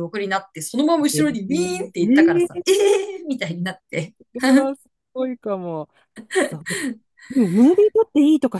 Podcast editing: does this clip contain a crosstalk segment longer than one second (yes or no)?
yes